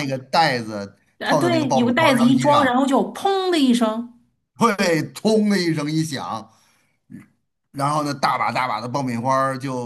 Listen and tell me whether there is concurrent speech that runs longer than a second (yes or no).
yes